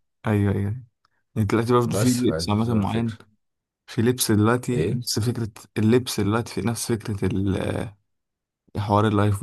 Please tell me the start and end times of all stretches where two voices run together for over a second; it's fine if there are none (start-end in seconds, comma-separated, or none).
1.9-3.1